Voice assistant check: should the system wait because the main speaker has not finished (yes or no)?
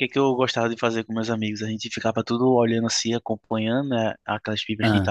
yes